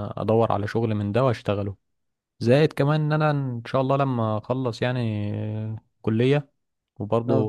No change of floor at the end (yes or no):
yes